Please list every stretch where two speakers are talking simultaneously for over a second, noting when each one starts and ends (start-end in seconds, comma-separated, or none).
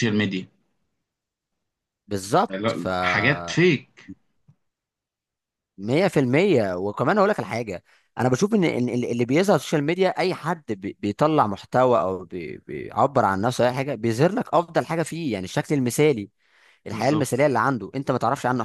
none